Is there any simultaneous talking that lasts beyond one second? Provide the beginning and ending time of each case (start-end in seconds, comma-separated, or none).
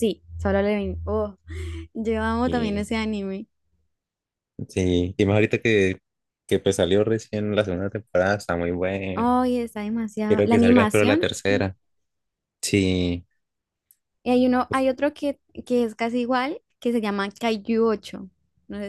10.3-11.6